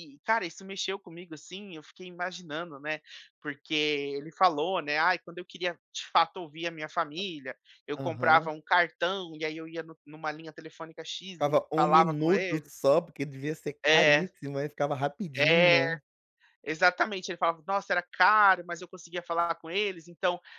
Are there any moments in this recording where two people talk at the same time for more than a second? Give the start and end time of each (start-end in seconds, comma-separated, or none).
11.3-12.7